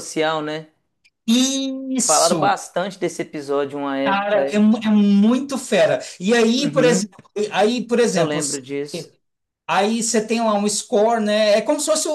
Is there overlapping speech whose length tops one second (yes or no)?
no